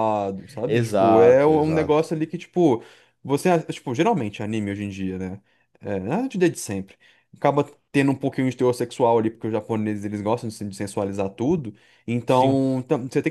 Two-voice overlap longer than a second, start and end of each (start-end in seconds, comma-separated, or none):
0.7-2.0